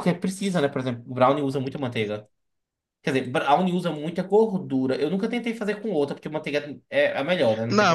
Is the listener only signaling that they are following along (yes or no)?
no